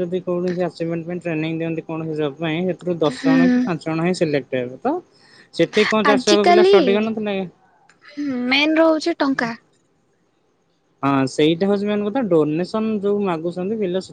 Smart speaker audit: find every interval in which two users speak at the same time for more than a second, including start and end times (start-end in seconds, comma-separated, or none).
none